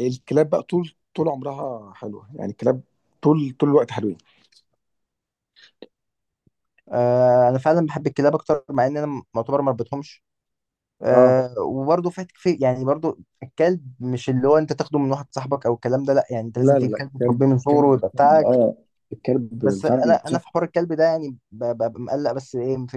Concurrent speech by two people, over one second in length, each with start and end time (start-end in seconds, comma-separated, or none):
16.6-18.6